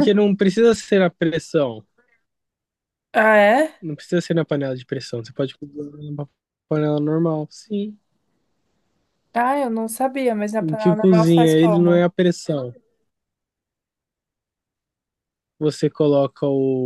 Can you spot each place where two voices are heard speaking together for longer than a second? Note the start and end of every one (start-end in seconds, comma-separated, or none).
10.6-12.1